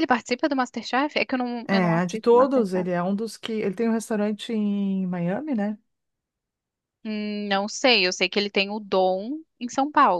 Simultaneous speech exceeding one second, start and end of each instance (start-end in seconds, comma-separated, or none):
1.6-2.9